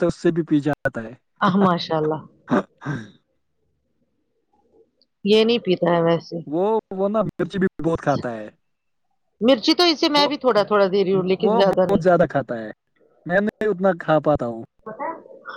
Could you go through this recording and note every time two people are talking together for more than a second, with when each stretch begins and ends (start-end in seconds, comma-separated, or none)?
10.2-12.0